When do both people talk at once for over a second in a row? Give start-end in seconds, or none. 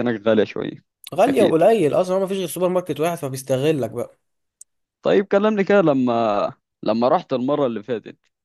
none